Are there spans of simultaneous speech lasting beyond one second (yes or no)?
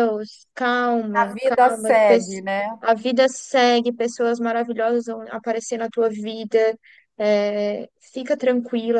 yes